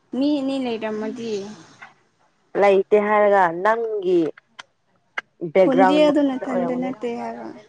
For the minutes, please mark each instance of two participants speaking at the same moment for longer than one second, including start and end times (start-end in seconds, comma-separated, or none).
5.6-6.9